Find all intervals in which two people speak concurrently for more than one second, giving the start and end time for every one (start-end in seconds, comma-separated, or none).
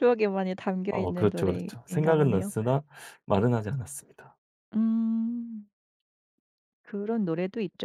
0.9-2.5